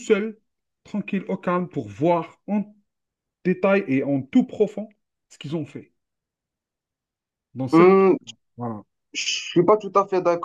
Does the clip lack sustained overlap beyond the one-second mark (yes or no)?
yes